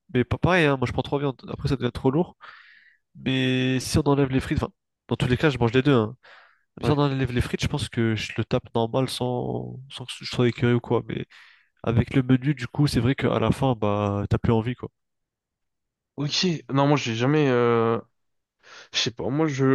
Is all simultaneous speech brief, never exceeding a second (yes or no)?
yes